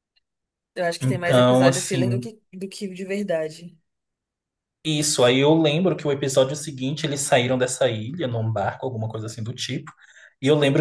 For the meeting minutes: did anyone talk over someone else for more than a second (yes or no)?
yes